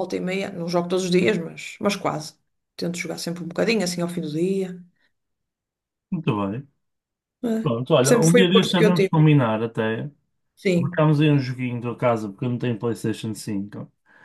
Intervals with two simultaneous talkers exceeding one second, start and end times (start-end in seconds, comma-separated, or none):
7.6-9.2